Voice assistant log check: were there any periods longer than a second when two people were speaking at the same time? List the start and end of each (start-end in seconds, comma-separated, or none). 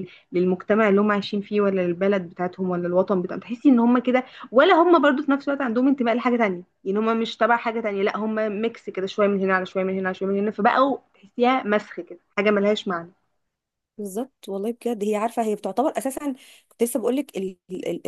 none